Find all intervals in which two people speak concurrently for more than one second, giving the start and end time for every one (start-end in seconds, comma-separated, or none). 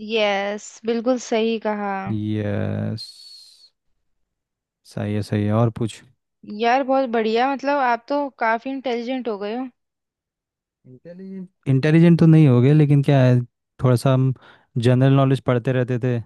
none